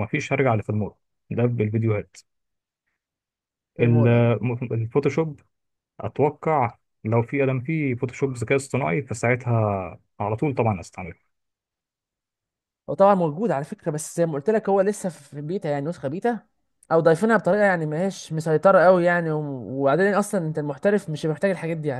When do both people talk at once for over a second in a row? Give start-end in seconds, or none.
none